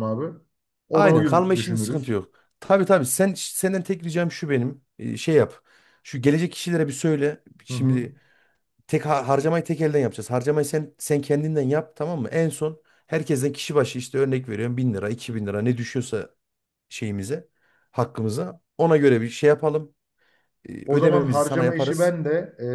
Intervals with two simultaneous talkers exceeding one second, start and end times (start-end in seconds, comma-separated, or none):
0.9-2.2, 20.9-22.1